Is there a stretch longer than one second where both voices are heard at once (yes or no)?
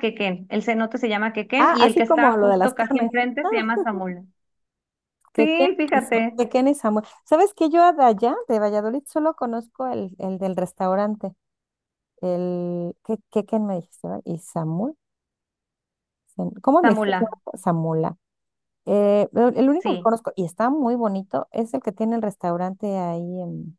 yes